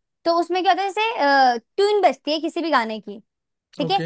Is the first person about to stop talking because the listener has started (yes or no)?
no